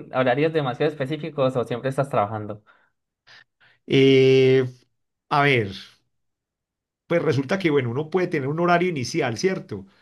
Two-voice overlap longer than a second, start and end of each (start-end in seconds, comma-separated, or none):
none